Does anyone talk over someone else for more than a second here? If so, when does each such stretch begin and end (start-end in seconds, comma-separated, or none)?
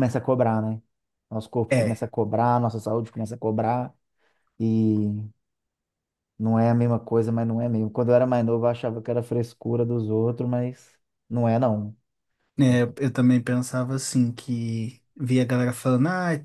none